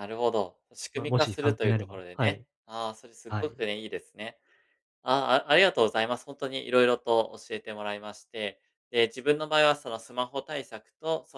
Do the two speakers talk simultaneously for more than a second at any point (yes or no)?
yes